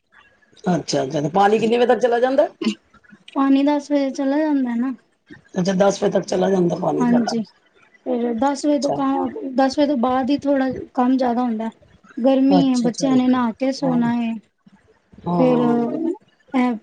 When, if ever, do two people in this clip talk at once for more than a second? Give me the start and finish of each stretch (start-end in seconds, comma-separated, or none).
12.6-14.0